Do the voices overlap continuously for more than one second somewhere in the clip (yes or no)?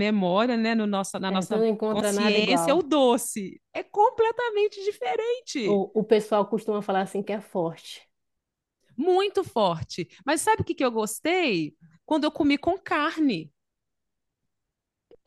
yes